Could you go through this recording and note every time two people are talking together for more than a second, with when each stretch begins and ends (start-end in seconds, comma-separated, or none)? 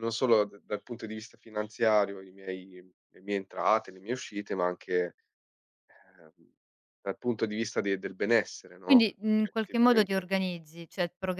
8.8-10.3